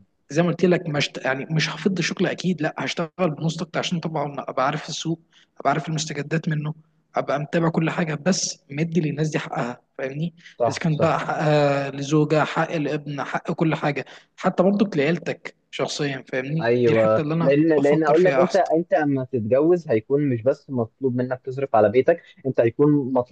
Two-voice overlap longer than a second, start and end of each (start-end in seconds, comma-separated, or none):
16.6-18.6